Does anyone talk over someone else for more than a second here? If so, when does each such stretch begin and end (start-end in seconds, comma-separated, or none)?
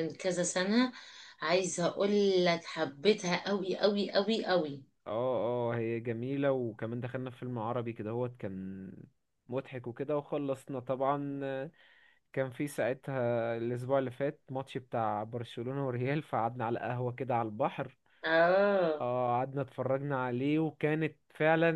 none